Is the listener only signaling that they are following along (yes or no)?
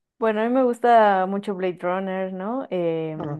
yes